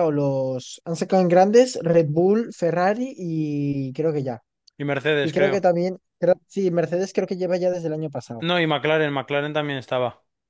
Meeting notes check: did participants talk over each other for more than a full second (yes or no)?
no